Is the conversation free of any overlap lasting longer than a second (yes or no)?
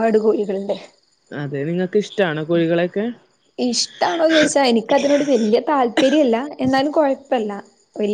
yes